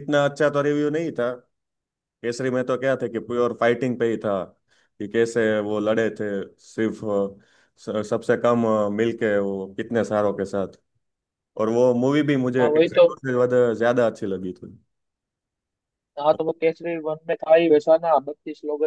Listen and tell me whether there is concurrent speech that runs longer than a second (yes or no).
no